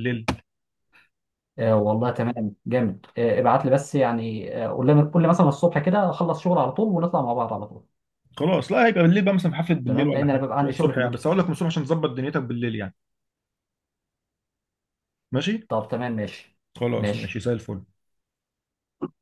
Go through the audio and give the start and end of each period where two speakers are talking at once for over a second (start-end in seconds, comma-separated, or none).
9.8-11.3